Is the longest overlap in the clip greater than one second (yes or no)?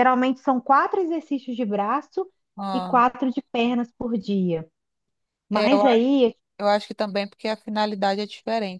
no